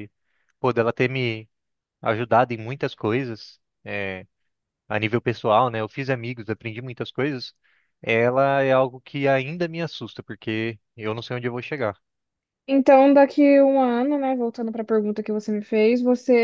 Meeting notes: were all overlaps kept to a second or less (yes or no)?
yes